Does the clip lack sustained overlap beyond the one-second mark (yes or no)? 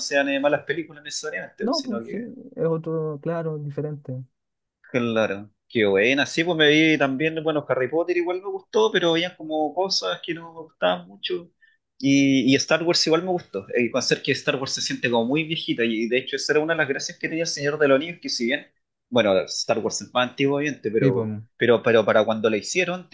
yes